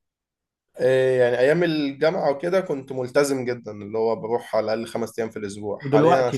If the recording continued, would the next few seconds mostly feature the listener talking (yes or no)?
no